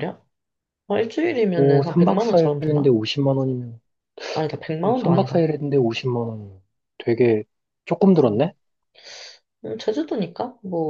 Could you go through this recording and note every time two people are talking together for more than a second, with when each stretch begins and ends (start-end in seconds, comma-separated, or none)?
1.6-3.0